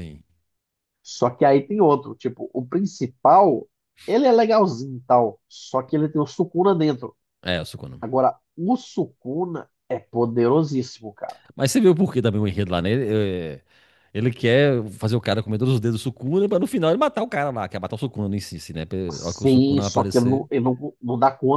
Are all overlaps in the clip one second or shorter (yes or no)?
no